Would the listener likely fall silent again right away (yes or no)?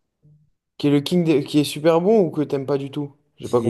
no